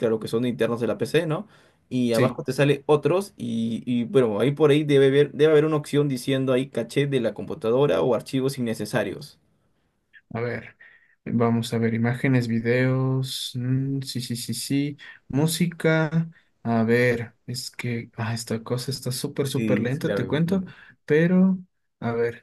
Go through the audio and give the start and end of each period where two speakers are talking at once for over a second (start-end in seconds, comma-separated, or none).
19.4-20.6